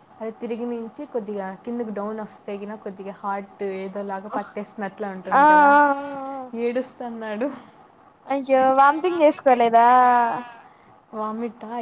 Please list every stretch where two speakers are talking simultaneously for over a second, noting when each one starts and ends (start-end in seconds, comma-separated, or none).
none